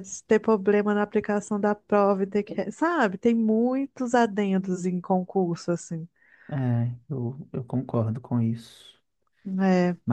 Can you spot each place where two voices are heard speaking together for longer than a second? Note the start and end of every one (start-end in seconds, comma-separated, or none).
none